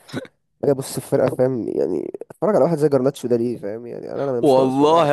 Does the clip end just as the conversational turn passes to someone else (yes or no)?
yes